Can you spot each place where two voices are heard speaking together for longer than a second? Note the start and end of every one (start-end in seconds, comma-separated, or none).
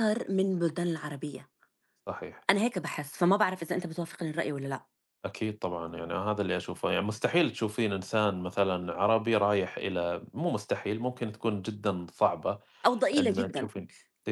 none